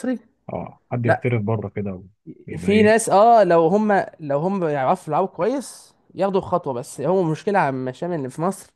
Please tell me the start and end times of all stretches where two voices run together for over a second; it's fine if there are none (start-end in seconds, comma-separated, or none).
none